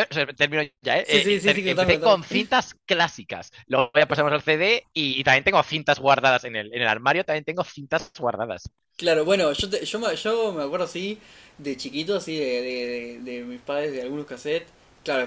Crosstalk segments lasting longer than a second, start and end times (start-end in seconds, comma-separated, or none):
1.0-2.5